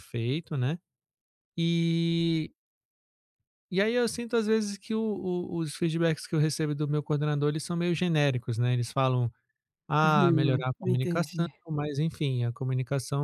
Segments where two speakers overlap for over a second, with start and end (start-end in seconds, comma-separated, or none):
10.0-11.5